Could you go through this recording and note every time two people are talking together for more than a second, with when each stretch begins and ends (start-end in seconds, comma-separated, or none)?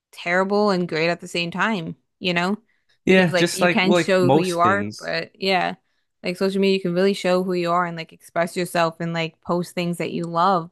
3.1-5.1